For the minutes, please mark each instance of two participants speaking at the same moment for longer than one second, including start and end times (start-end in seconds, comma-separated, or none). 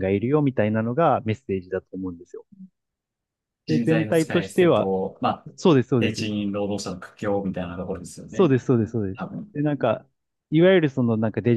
3.7-4.9